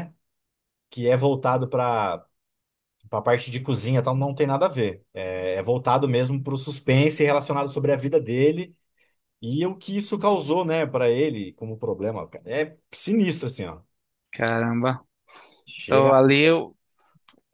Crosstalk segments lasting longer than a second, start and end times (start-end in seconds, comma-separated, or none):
none